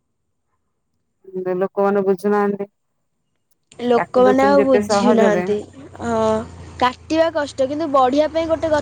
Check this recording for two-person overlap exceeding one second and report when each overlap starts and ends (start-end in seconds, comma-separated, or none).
4.0-5.4